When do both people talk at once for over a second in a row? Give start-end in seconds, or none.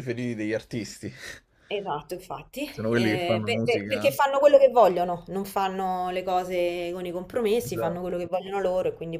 2.7-4.2